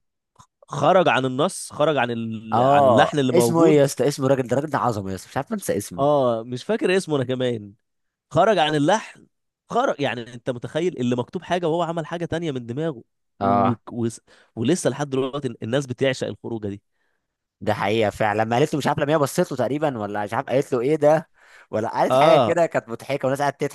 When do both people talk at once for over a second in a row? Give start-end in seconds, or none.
2.5-3.9